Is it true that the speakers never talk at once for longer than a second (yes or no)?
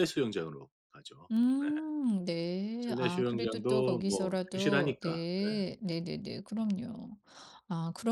no